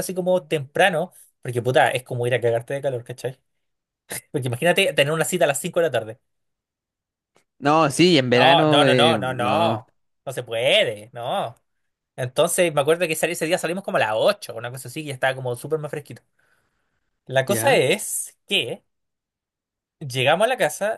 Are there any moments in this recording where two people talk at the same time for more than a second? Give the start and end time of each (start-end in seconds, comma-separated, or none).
8.3-9.8